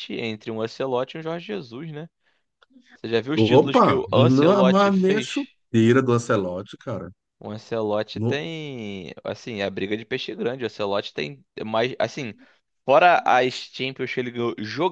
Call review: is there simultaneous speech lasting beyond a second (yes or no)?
yes